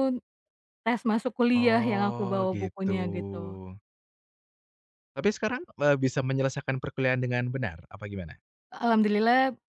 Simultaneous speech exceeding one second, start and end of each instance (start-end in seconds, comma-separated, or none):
1.5-2.9